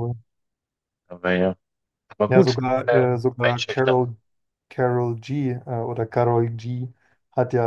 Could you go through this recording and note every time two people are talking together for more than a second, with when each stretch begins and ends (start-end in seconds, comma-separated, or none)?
2.3-4.0